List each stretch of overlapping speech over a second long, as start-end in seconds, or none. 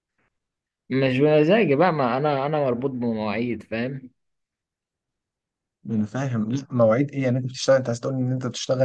none